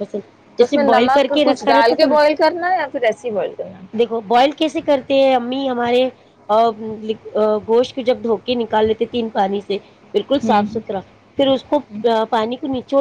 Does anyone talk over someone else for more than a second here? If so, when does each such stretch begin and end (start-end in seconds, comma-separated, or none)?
0.6-2.1